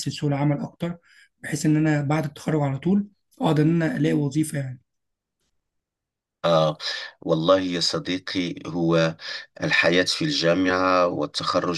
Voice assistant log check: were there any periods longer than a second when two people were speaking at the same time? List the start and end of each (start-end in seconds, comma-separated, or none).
none